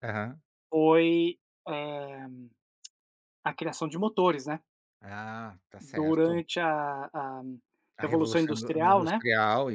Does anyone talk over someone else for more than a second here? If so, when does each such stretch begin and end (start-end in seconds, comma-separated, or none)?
8.0-9.2